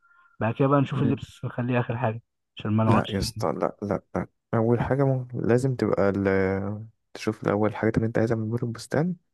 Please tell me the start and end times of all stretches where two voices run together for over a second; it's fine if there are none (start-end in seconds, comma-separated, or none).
none